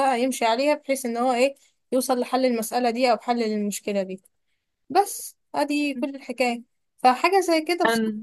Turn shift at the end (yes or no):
no